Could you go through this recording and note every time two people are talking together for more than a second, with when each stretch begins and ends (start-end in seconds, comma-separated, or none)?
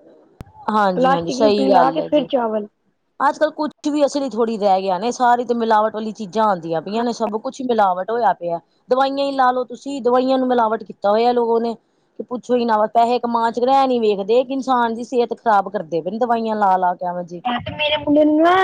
0.9-2.3